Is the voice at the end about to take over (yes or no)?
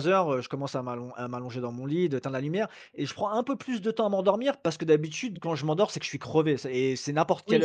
no